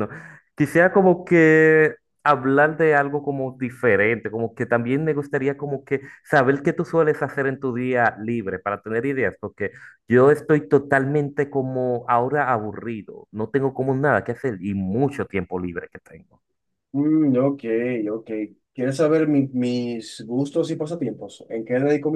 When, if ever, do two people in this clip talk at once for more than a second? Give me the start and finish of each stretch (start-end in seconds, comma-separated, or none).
none